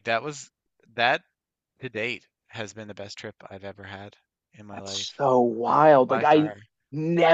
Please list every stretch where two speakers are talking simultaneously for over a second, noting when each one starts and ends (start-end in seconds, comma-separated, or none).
none